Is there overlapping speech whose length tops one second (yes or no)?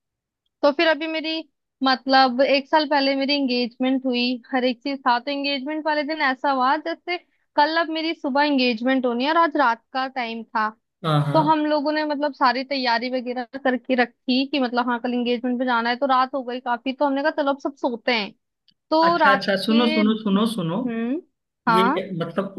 yes